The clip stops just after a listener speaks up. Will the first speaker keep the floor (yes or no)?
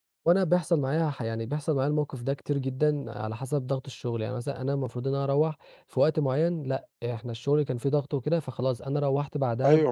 no